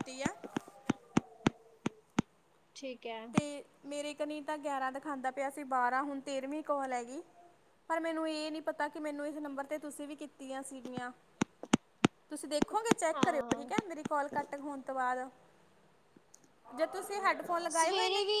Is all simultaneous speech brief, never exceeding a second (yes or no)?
yes